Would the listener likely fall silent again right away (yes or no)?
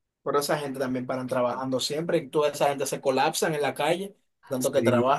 no